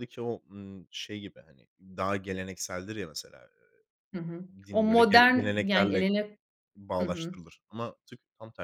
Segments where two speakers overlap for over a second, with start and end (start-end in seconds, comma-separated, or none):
4.3-6.1